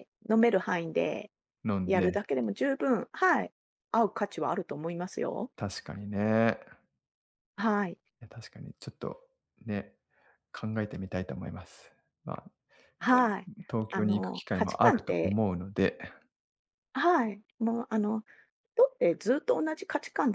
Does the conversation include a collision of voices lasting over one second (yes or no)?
yes